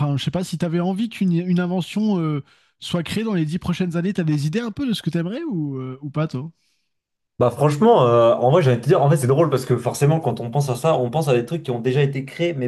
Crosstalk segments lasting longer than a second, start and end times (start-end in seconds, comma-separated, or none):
none